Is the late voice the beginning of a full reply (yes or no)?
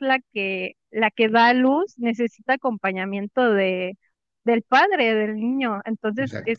no